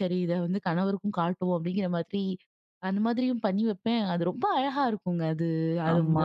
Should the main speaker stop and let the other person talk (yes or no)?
no